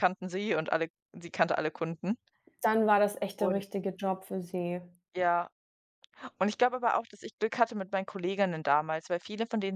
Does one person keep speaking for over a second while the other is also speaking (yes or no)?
no